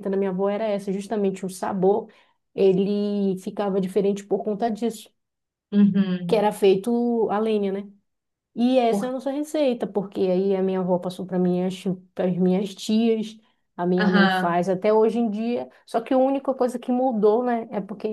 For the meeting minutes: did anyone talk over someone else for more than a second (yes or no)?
no